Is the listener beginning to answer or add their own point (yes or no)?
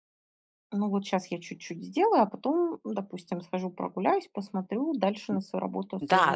yes